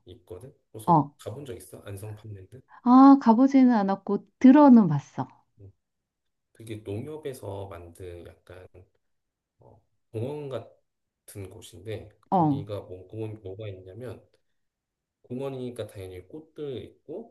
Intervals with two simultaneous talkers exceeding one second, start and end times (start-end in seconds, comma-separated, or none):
none